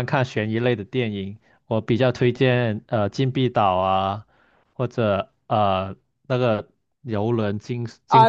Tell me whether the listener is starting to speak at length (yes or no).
yes